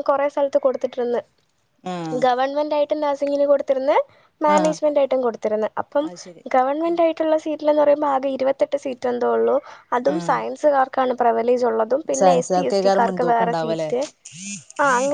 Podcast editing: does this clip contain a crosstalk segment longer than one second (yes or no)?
yes